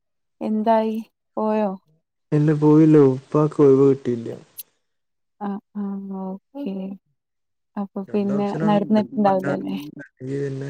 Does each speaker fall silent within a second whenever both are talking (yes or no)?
no